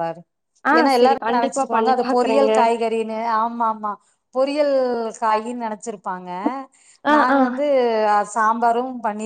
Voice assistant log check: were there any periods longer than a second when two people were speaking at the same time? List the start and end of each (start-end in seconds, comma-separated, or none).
0.8-2.5